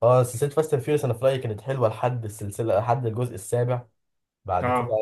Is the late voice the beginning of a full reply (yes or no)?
no